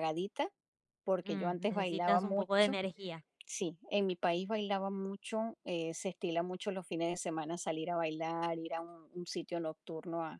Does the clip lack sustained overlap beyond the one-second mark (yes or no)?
no